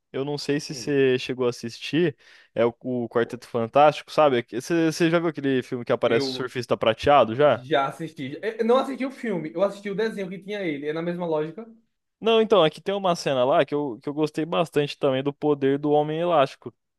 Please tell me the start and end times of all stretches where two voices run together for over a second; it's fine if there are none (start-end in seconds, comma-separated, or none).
none